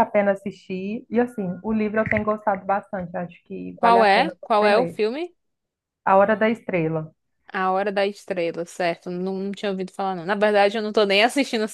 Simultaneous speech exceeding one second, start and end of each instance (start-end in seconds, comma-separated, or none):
3.8-5.0